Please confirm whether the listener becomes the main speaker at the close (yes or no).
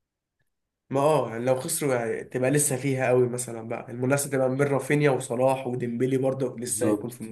yes